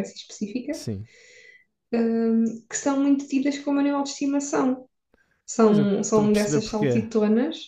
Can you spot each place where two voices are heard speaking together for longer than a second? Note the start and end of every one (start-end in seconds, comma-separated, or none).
5.6-7.0